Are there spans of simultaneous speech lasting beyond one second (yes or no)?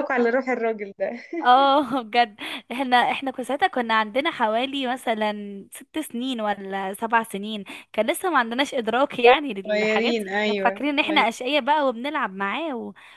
yes